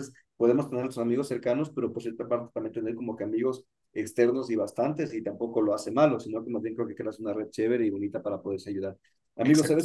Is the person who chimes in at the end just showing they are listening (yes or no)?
yes